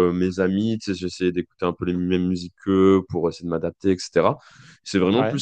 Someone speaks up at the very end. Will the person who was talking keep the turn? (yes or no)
yes